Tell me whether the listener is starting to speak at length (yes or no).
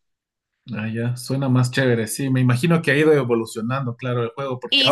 no